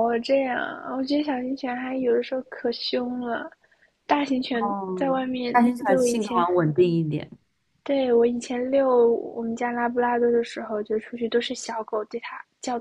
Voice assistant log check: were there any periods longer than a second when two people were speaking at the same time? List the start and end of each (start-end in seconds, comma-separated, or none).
4.6-6.4